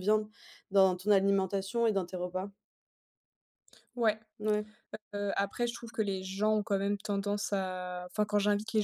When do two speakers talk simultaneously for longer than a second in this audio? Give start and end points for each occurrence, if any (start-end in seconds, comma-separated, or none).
none